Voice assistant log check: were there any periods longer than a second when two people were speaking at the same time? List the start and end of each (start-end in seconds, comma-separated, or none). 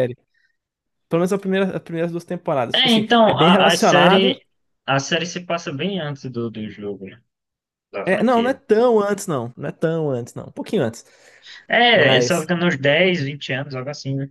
2.7-4.3